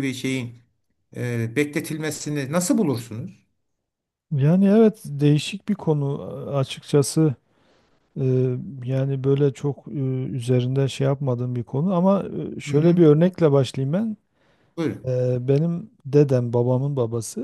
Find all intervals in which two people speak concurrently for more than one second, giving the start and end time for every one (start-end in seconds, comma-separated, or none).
none